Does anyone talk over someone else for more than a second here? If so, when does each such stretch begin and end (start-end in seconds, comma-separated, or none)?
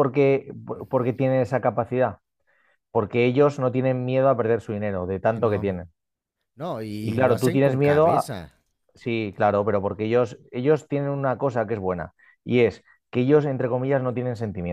7.0-8.3